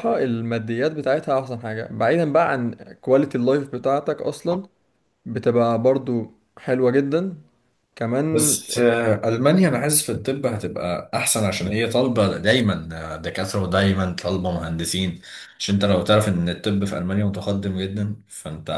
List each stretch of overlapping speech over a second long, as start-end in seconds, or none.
none